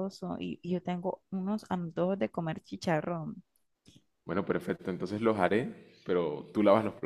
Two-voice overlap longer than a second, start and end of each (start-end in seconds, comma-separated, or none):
none